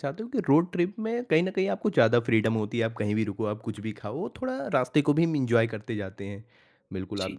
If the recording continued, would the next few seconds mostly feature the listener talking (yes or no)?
no